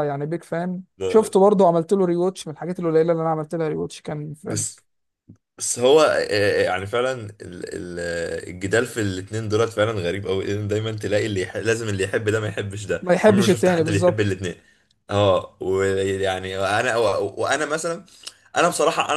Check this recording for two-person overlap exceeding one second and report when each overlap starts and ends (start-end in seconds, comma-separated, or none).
13.0-14.4